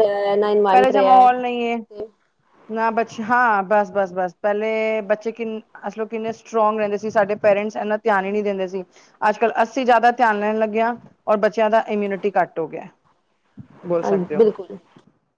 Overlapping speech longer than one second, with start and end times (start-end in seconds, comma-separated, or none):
none